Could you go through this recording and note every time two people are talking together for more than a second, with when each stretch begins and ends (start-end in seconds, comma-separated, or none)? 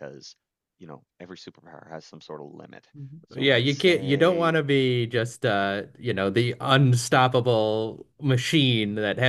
3.4-4.6